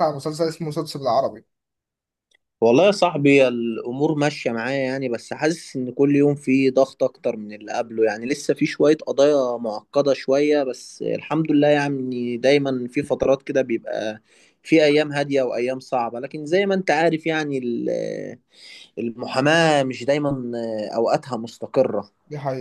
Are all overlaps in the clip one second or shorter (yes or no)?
yes